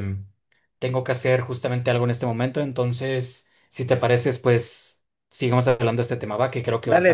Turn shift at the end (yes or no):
yes